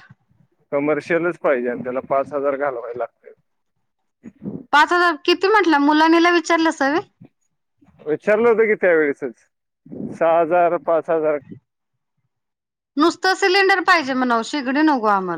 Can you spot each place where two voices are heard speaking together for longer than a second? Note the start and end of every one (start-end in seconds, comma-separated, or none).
none